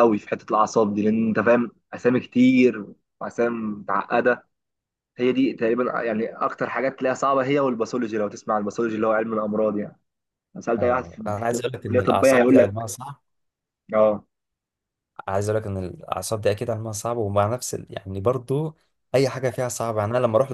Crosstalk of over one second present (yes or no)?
yes